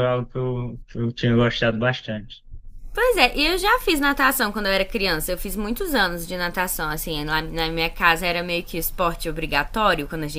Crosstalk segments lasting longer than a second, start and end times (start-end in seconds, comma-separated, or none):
none